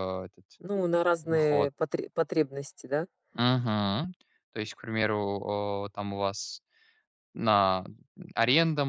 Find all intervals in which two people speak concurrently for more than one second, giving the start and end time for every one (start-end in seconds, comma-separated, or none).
none